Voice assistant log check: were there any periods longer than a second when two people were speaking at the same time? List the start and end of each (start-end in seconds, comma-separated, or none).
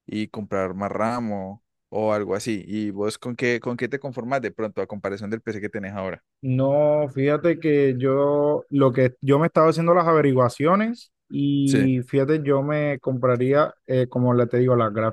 none